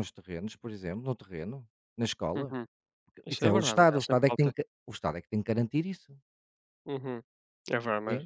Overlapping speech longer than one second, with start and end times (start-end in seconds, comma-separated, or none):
3.3-4.5